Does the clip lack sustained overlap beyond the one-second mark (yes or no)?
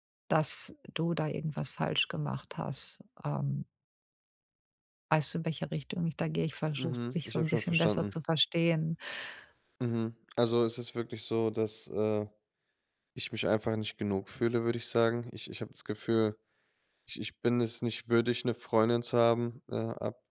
no